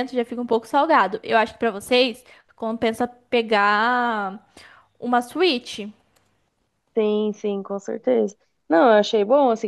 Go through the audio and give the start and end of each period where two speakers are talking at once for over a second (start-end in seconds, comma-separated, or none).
none